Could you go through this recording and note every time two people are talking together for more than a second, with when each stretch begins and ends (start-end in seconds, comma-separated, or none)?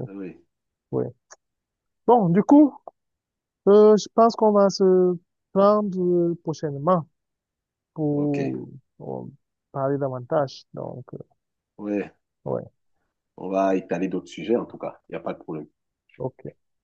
none